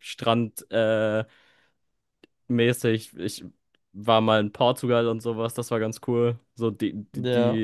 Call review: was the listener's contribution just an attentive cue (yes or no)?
yes